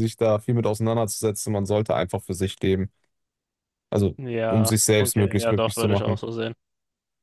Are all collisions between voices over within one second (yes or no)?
no